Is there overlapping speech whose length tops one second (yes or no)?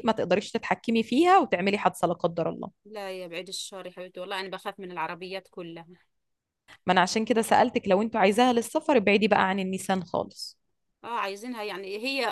no